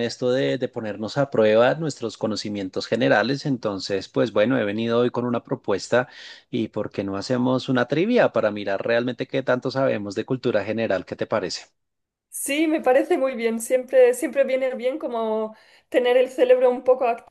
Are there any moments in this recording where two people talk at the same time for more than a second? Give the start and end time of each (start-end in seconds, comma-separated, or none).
none